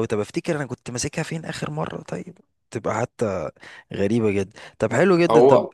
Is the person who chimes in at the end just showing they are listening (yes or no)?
yes